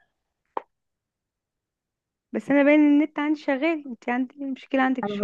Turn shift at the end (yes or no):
yes